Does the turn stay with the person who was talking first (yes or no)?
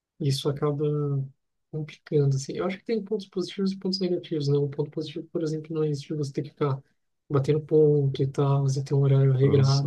yes